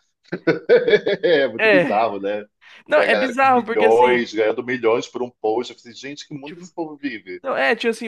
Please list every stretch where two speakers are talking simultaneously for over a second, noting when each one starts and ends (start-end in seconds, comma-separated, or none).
2.9-4.3